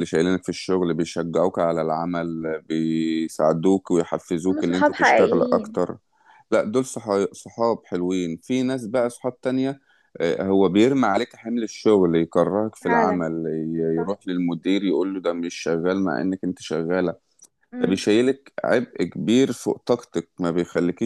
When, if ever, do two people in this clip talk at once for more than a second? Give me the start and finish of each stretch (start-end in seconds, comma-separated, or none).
4.3-5.8